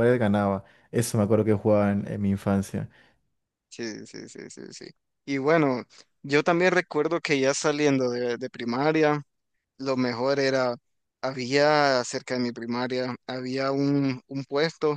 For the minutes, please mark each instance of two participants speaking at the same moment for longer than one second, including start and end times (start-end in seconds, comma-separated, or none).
none